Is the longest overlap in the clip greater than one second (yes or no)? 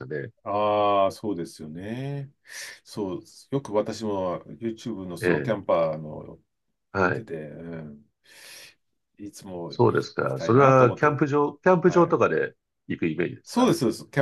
yes